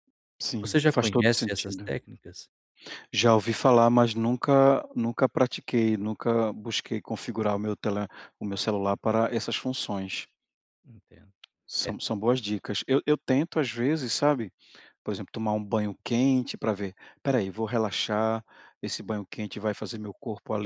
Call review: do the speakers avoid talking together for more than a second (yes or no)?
no